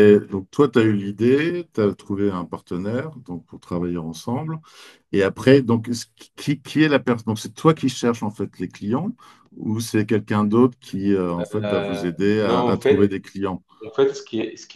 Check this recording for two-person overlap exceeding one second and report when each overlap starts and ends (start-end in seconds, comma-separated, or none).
11.4-13.2